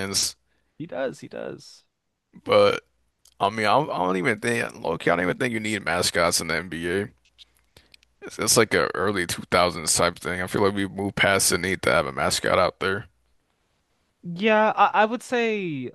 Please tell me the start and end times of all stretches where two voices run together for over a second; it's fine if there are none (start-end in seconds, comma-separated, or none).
none